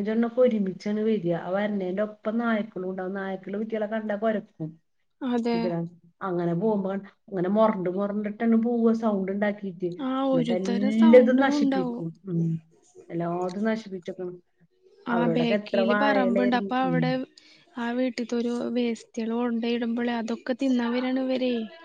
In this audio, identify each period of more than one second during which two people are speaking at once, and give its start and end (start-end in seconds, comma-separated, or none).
10.3-12.0